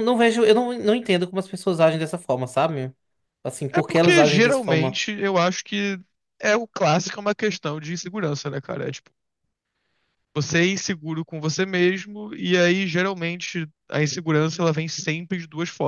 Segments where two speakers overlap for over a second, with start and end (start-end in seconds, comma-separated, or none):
3.7-5.0